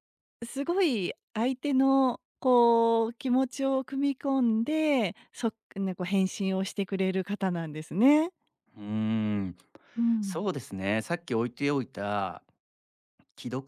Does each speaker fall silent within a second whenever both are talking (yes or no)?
yes